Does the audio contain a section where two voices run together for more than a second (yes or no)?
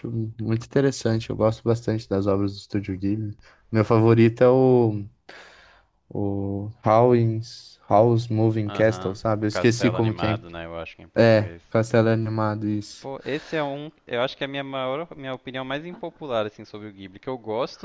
yes